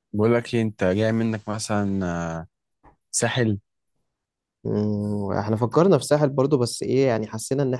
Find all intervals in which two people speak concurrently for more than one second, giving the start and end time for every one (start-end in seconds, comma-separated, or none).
none